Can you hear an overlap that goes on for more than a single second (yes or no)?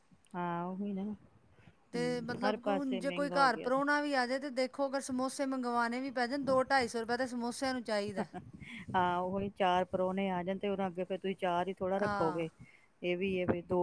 yes